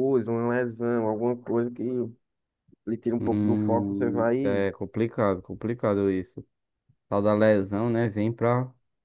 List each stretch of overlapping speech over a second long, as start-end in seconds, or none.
3.2-4.7